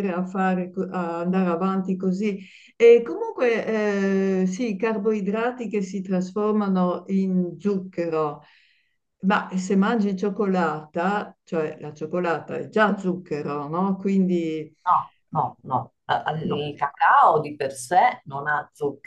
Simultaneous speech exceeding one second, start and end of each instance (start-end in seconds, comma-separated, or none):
none